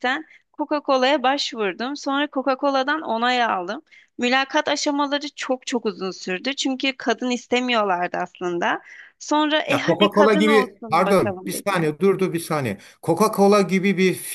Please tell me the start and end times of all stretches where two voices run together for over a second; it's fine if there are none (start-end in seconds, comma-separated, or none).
9.7-11.9